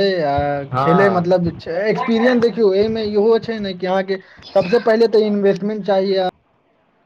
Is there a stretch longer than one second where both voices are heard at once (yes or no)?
yes